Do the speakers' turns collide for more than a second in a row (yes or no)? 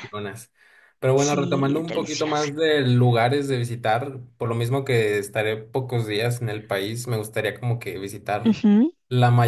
yes